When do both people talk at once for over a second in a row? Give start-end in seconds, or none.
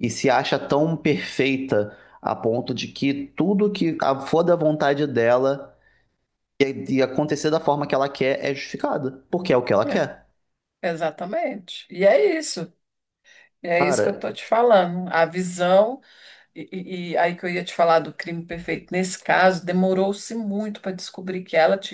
none